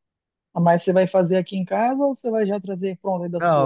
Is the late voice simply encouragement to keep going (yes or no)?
no